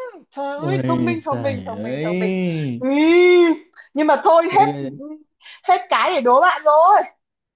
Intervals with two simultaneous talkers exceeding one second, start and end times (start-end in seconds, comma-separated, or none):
0.6-2.3